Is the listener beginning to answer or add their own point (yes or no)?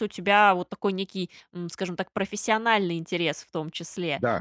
no